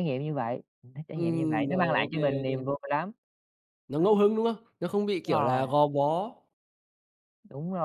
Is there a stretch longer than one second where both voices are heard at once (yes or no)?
yes